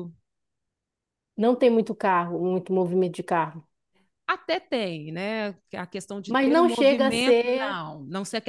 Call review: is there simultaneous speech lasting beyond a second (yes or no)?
yes